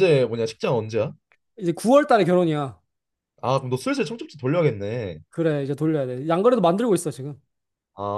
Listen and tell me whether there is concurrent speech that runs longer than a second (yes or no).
no